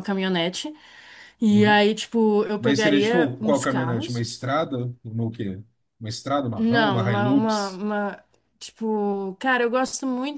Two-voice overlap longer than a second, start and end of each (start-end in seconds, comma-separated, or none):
2.6-4.3, 6.6-7.8